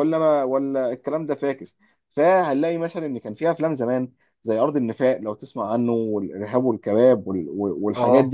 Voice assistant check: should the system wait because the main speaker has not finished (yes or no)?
yes